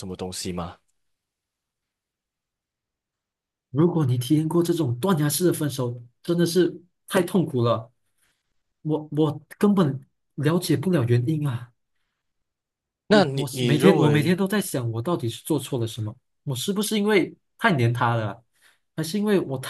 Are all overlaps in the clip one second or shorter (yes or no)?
no